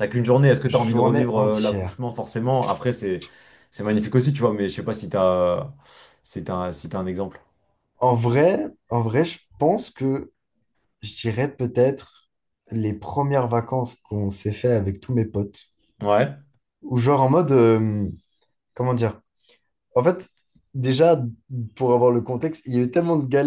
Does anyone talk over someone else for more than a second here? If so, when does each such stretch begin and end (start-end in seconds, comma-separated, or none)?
0.7-2.0